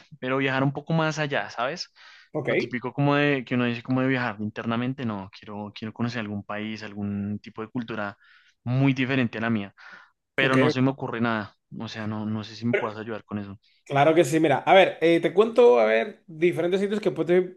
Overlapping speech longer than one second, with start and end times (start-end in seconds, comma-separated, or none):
none